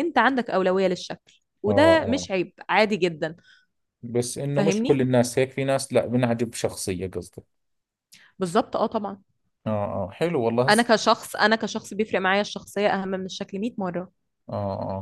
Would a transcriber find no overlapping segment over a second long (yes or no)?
yes